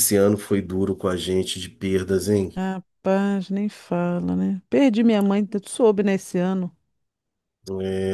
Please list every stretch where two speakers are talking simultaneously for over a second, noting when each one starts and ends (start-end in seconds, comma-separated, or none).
none